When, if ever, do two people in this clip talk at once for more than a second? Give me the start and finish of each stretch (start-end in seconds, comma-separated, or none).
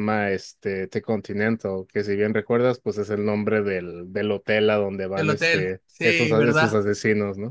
5.1-6.8